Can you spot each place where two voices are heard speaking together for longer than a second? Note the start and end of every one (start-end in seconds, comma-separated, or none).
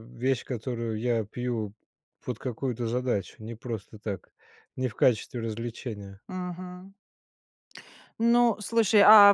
none